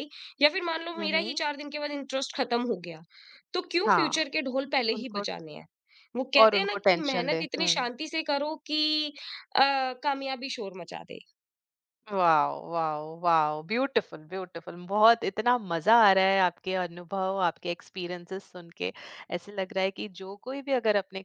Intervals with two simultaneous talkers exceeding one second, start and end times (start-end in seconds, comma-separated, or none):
6.4-7.7